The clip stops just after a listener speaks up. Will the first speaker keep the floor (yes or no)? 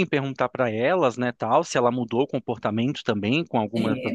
yes